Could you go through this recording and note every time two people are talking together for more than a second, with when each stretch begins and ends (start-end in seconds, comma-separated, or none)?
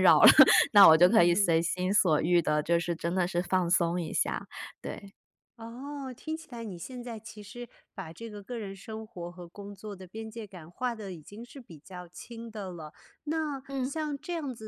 none